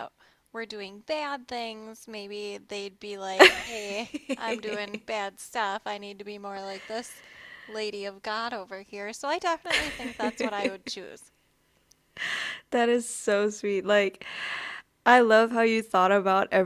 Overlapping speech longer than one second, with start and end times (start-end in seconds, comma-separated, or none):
none